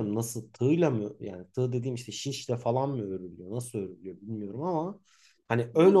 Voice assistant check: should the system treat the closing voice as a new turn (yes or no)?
yes